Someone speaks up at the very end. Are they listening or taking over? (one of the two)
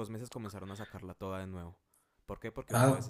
listening